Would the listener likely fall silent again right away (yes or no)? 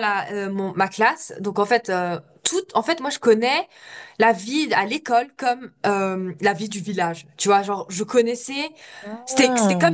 yes